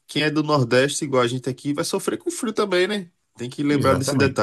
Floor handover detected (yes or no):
yes